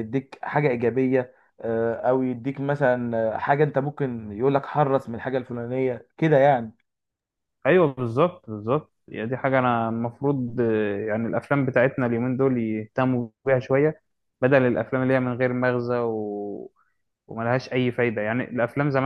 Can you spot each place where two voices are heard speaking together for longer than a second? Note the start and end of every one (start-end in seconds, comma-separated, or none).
none